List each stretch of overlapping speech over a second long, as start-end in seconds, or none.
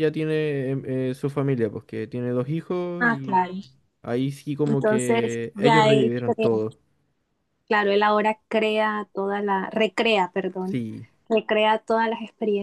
4.7-6.5